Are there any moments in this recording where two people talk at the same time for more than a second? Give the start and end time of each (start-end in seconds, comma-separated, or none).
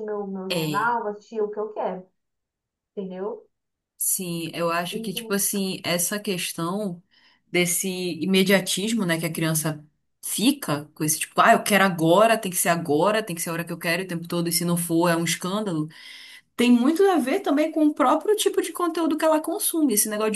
none